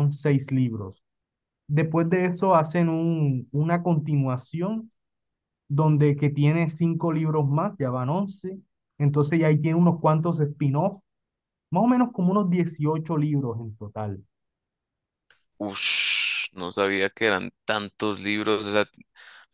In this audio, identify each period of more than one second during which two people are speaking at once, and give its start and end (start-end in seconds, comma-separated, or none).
none